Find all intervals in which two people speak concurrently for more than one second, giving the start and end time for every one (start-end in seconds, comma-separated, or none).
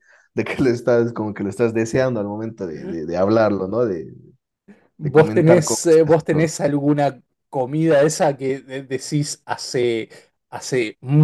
5.0-6.5